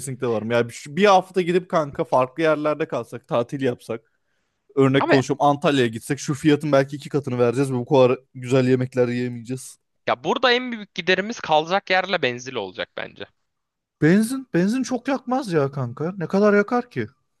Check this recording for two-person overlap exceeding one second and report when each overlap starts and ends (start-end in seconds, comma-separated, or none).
none